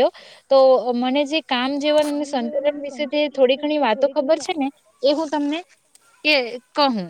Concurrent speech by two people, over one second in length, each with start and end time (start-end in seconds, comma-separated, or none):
2.1-4.7